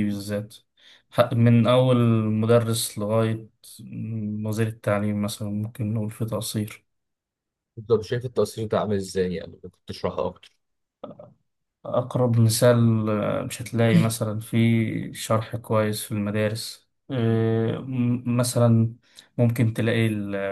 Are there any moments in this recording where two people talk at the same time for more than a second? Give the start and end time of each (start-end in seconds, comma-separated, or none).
none